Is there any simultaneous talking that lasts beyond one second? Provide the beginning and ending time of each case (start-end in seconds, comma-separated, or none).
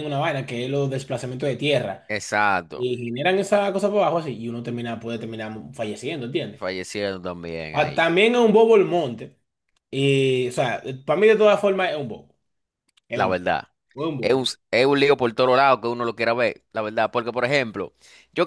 none